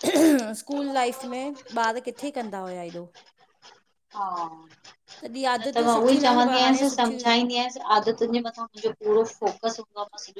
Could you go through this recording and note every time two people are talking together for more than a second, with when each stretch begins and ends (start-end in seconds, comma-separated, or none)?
5.6-7.3